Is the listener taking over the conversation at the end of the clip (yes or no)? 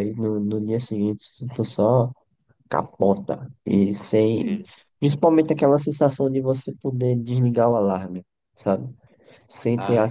no